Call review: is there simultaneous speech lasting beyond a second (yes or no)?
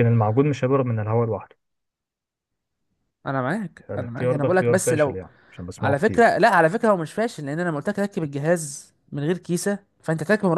yes